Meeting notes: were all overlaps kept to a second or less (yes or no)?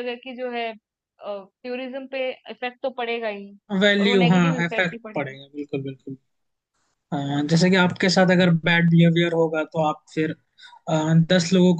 no